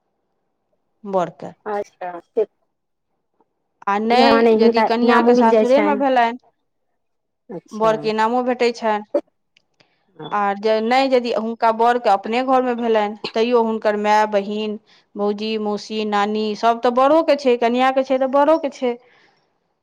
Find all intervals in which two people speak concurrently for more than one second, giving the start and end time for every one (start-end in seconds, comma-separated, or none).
4.1-6.0